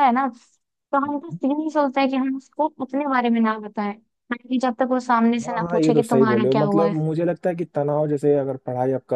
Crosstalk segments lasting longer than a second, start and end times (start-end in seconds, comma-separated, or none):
5.5-6.9